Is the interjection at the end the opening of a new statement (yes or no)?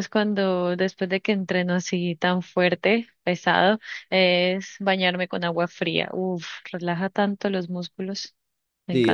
yes